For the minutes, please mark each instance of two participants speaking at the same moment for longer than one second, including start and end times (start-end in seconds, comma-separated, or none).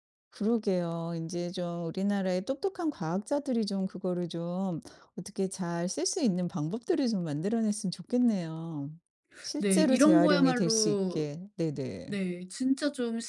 9.6-11.3